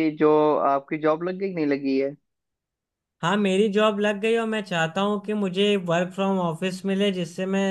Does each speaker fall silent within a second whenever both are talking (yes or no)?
yes